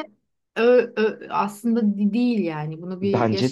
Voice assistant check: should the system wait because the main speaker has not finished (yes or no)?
no